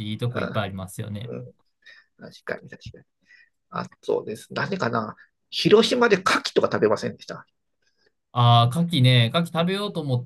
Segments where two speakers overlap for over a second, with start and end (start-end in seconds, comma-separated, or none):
none